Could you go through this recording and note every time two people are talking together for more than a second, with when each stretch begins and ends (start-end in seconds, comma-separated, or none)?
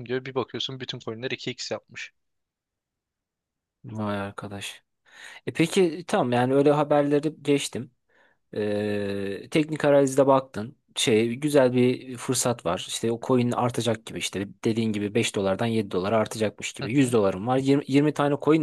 none